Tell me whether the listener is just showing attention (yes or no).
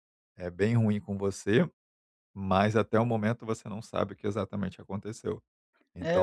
no